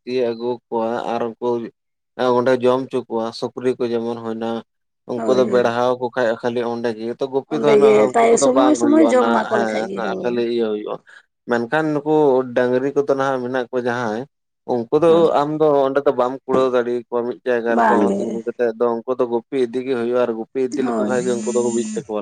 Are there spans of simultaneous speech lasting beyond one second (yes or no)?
yes